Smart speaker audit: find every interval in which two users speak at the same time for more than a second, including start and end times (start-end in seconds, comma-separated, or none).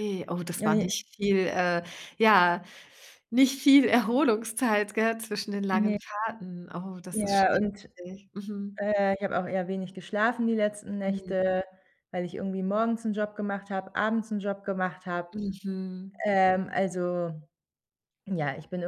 none